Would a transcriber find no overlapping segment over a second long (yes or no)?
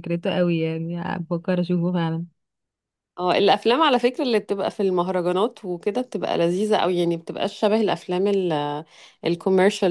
yes